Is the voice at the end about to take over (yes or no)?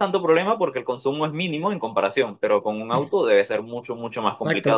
yes